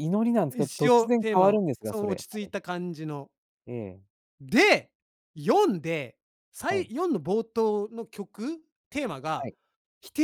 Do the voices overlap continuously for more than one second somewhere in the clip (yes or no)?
yes